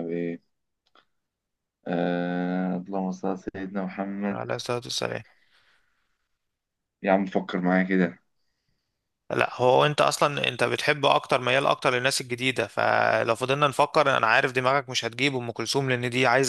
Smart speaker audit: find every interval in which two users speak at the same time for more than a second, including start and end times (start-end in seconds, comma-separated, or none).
none